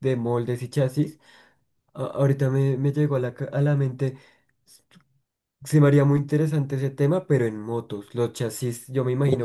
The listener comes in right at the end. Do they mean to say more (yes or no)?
no